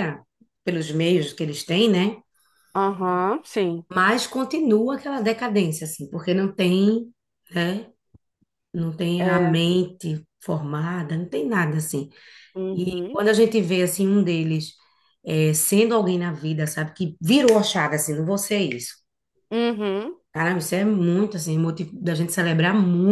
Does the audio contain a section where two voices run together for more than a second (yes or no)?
no